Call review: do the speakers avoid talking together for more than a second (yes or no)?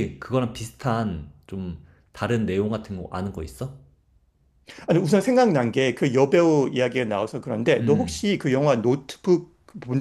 yes